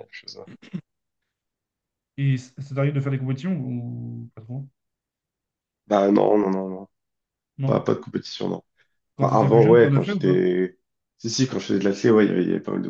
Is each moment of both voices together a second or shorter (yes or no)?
no